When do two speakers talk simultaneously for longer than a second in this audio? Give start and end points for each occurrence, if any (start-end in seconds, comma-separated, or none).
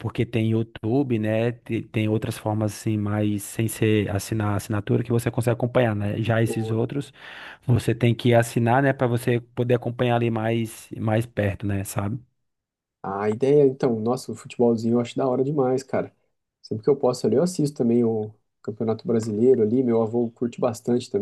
none